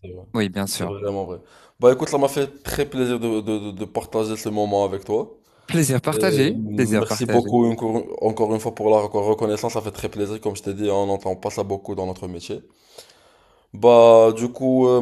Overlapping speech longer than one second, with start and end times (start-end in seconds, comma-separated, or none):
6.1-7.6